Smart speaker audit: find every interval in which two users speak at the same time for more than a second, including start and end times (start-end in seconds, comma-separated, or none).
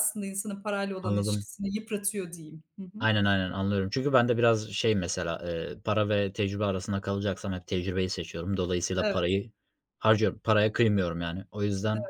none